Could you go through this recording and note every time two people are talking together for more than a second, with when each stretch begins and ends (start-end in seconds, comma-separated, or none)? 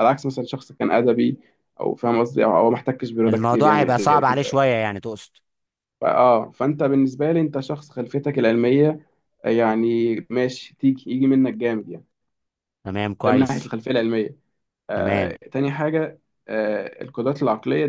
3.3-4.6